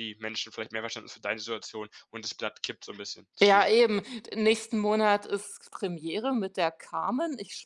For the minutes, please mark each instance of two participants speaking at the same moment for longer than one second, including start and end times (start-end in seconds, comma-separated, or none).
none